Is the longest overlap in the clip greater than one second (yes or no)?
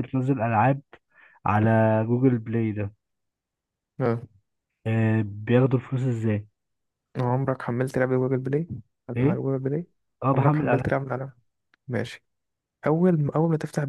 no